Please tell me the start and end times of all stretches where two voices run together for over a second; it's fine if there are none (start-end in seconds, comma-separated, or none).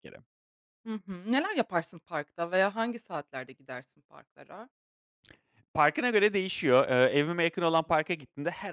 none